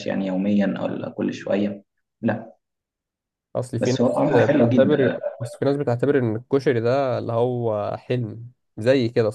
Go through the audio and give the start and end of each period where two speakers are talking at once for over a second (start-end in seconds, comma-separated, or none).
3.8-5.2